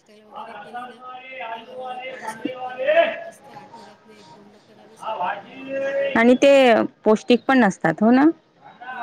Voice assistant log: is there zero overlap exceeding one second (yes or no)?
yes